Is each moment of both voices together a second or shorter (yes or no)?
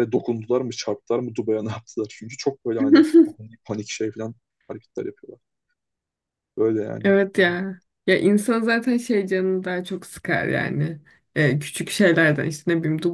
yes